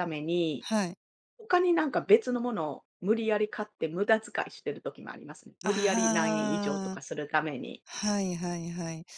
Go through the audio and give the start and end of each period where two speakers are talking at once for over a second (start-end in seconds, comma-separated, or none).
5.6-7.0